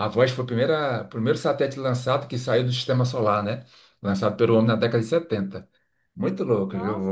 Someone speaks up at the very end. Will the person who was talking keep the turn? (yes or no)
no